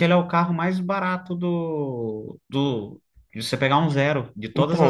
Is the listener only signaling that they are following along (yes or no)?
no